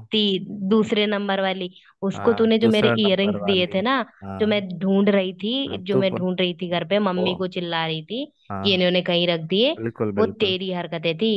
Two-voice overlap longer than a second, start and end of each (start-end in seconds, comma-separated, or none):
2.1-3.8